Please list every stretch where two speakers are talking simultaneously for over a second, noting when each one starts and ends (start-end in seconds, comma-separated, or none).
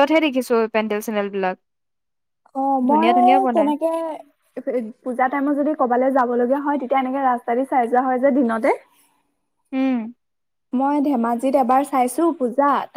none